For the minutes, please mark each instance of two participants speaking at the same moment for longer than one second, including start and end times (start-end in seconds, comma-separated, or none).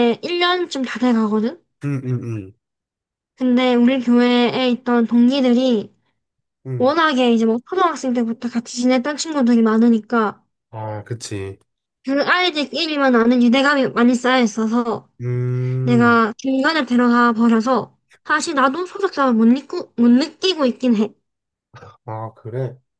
none